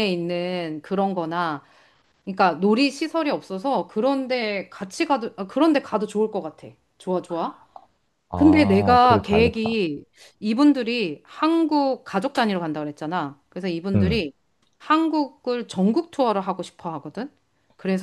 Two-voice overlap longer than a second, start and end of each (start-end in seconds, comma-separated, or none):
8.3-9.8